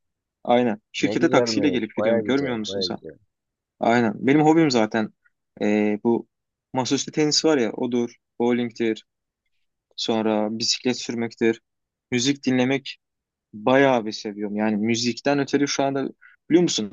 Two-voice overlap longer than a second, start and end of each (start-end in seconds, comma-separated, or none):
1.0-3.0